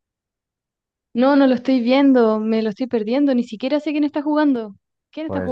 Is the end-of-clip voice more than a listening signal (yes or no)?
yes